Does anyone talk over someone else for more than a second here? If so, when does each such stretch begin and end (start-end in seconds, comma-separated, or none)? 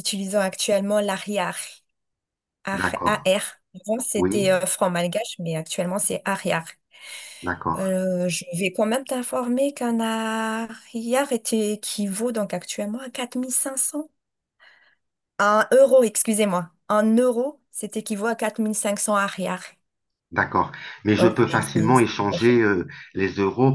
21.2-22.6